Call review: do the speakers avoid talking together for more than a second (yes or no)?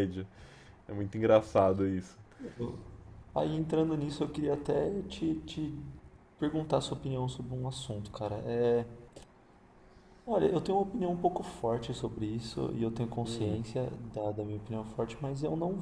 yes